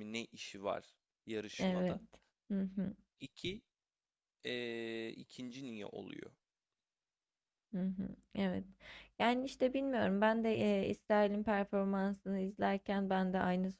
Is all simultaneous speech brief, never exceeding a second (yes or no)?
yes